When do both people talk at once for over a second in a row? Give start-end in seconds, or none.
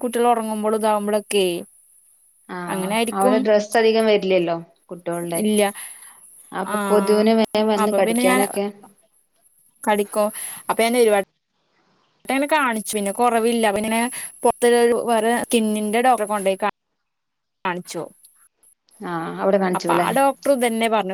none